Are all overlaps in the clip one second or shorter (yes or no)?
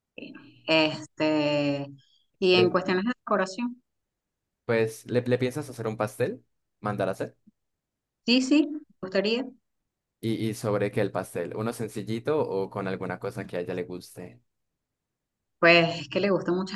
yes